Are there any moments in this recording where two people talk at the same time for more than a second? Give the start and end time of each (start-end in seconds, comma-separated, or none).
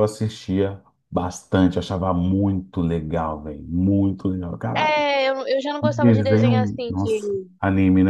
5.8-7.5